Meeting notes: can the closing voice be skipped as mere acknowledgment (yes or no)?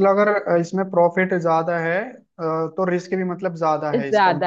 no